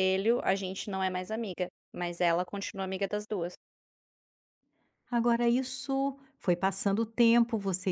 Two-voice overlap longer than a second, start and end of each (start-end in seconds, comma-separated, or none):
none